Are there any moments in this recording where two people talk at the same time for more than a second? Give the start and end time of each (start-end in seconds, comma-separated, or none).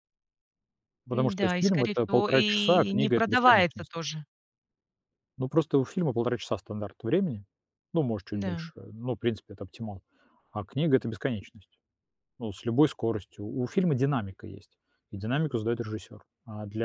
1.1-3.9